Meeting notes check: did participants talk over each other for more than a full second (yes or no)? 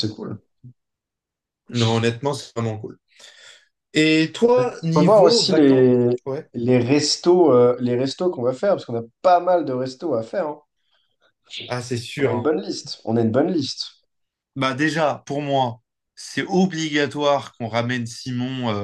yes